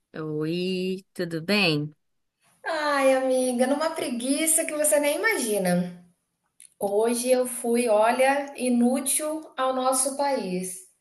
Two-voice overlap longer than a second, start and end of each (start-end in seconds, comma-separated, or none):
none